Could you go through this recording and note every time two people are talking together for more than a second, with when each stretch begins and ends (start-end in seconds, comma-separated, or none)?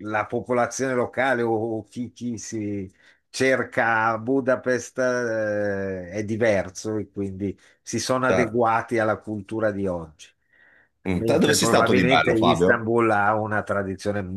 11.1-12.9